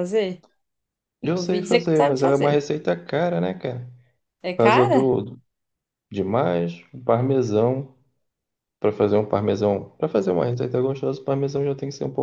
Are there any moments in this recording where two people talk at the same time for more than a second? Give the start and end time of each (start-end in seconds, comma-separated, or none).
1.3-2.6